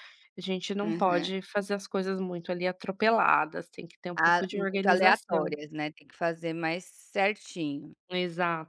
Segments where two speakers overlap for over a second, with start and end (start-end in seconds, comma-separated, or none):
4.2-5.5